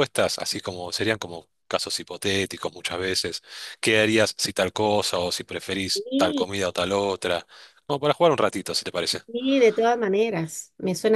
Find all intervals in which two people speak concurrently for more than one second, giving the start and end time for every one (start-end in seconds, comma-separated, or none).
none